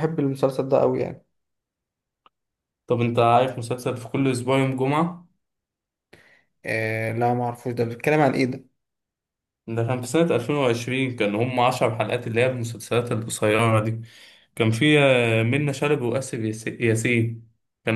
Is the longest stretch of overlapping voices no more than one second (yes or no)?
yes